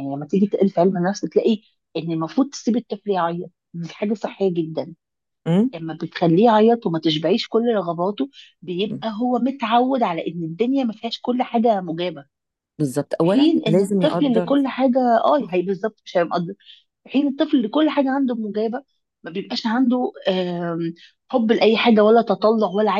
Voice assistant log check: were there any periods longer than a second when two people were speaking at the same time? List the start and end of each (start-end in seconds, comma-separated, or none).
13.2-14.5